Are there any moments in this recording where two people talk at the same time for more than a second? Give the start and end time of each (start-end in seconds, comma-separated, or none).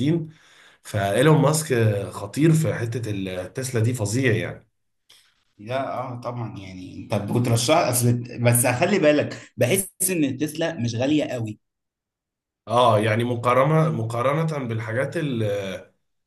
none